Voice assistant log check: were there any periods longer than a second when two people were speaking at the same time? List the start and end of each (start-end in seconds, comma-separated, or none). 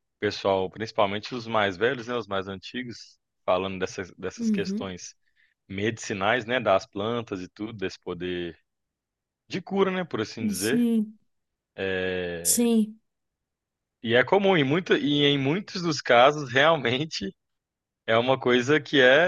none